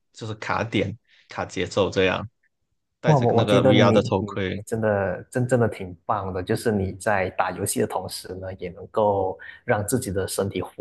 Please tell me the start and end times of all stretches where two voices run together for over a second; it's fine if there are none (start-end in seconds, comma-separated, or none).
3.0-4.6